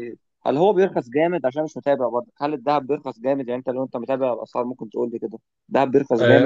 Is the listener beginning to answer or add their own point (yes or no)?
yes